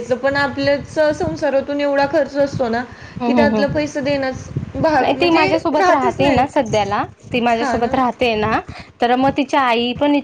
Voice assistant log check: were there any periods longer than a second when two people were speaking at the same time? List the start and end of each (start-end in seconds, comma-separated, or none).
5.0-6.8